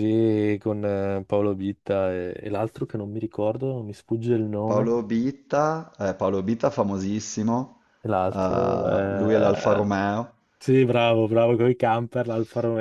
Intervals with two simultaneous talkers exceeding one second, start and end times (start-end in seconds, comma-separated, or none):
8.3-9.9